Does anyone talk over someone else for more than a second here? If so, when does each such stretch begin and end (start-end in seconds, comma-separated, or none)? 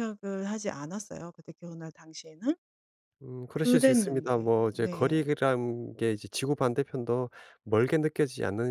3.5-5.2